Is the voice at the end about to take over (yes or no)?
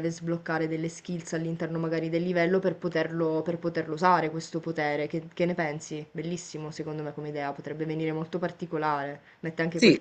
no